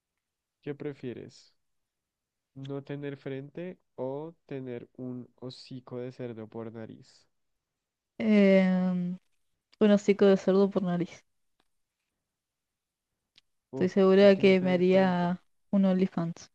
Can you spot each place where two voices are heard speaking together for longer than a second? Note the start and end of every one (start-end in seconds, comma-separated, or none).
13.7-15.3